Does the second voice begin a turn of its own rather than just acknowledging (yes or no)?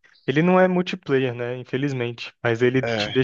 no